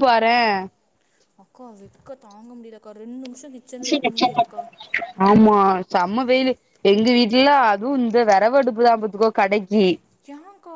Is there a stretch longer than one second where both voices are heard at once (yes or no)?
no